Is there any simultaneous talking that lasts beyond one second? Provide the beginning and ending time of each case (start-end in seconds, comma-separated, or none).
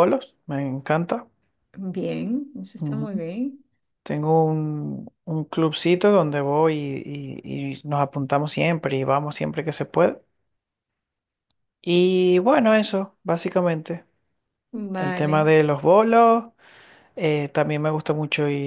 none